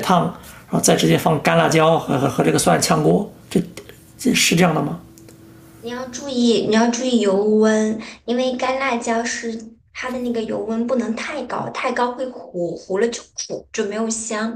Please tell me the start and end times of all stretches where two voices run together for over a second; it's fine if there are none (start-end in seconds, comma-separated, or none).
none